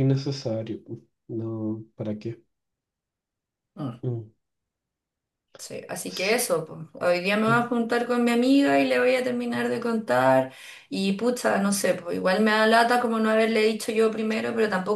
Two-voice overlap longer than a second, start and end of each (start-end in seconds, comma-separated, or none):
none